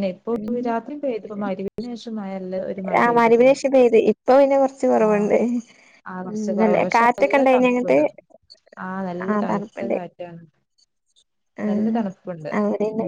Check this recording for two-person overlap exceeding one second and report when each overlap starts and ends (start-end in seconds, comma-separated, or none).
6.4-8.0